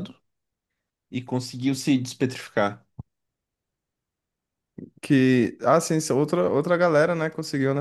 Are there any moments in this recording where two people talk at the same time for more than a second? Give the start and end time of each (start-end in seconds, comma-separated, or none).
none